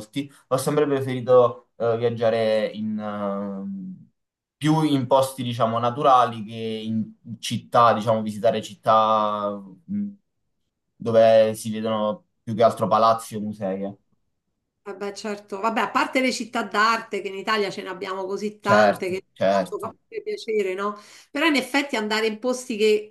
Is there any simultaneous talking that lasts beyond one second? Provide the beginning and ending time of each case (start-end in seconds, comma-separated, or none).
18.6-19.9